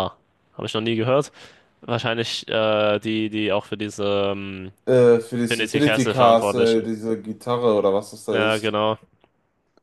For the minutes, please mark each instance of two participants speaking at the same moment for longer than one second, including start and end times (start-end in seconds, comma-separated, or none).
5.5-7.0